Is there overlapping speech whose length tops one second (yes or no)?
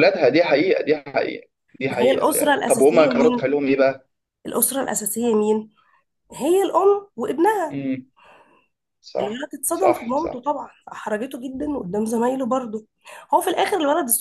yes